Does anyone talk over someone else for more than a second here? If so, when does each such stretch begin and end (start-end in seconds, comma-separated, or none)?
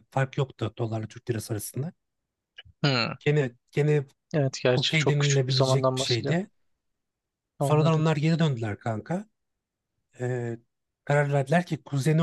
4.7-6.4